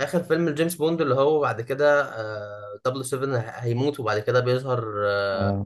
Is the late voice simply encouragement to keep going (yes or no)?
yes